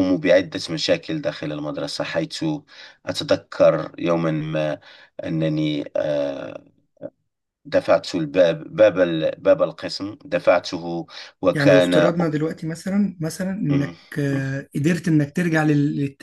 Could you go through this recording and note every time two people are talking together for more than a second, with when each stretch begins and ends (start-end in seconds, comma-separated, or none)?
none